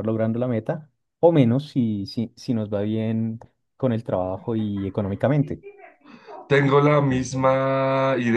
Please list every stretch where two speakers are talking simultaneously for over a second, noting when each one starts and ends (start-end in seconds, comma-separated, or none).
none